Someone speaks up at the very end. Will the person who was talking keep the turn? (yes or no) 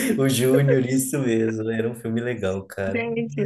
no